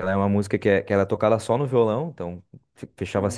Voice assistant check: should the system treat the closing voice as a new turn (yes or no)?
no